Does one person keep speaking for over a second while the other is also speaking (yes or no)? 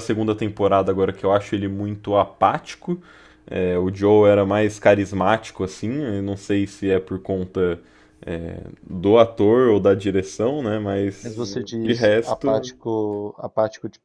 yes